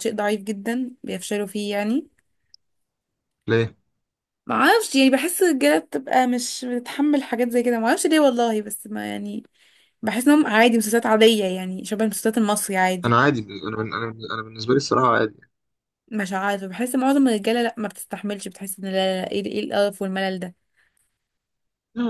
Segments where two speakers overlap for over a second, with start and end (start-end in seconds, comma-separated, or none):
none